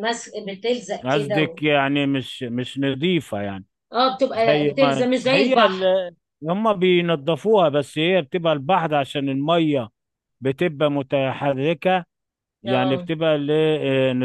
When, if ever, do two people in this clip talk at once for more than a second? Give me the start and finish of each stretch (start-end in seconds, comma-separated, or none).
4.3-5.9